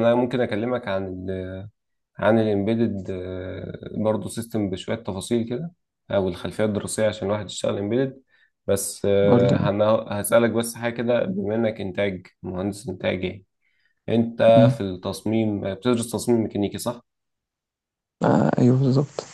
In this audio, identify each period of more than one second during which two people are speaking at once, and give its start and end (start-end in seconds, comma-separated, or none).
none